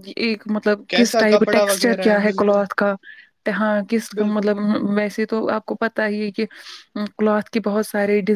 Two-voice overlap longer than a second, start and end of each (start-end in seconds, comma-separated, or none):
0.9-2.6